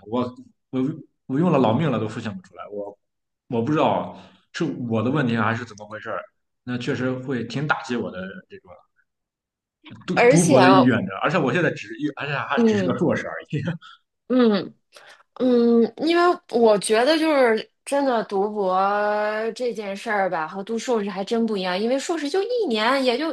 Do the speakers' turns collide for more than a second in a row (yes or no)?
no